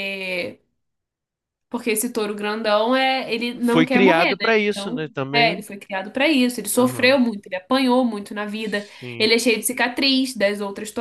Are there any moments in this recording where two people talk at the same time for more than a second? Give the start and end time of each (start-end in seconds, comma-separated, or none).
3.6-5.6